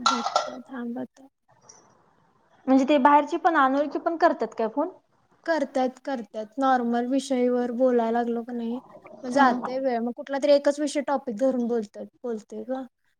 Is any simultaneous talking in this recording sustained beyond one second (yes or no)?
no